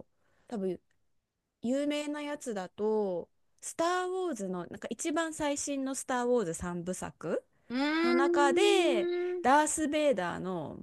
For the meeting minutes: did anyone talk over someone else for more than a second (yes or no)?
yes